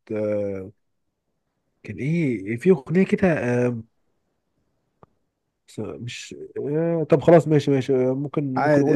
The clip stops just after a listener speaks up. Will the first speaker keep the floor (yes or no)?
yes